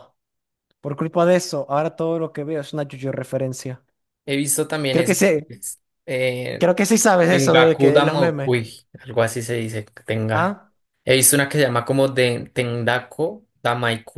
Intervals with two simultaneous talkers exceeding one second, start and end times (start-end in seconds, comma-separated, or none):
7.3-8.5